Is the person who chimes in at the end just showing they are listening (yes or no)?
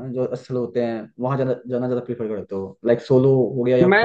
no